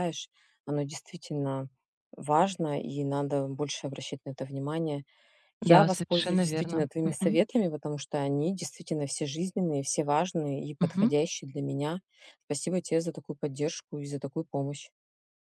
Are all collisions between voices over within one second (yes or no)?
no